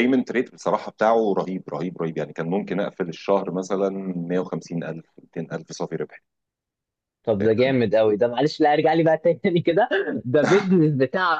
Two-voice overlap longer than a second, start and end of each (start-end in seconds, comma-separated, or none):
none